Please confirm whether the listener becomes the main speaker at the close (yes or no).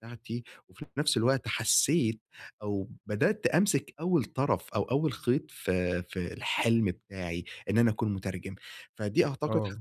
no